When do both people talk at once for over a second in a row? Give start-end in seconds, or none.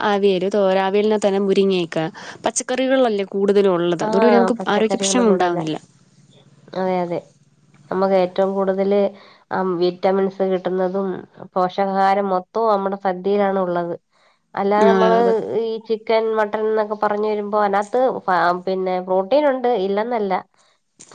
4.1-5.6